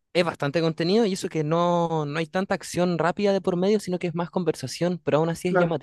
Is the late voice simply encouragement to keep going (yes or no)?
no